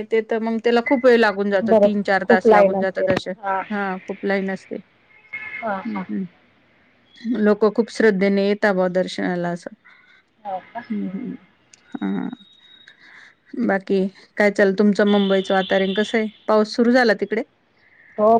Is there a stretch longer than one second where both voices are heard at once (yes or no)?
yes